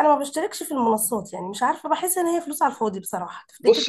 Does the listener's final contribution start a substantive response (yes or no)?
yes